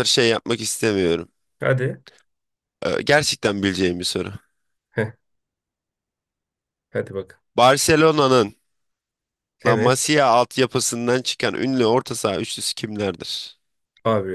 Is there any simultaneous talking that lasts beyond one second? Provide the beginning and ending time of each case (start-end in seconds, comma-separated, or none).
none